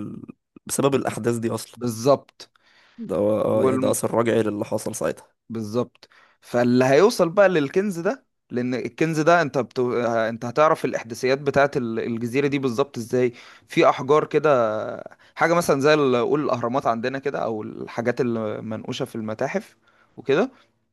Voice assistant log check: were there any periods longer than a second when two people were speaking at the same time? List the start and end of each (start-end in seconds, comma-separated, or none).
none